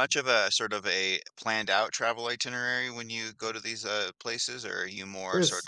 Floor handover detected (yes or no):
no